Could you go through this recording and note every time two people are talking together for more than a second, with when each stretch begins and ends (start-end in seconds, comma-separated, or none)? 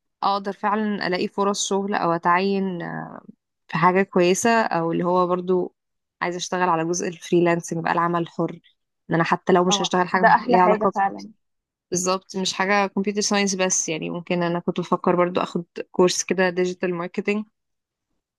9.7-11.1